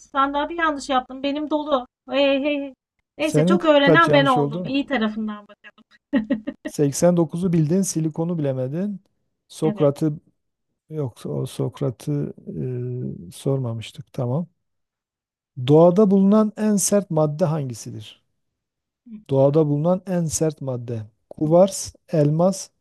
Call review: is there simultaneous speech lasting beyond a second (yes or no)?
yes